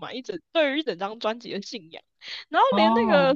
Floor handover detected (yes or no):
no